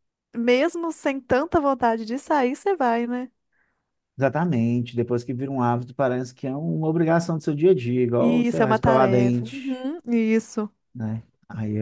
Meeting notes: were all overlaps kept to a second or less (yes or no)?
no